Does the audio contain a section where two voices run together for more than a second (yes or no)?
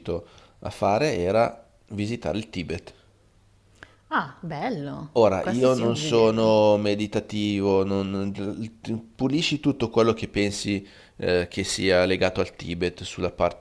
yes